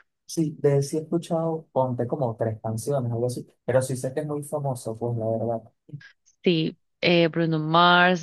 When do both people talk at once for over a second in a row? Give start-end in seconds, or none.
none